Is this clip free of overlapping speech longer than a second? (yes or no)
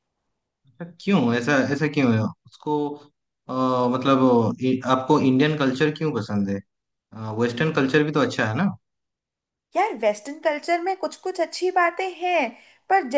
yes